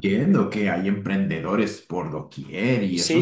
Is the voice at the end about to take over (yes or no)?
yes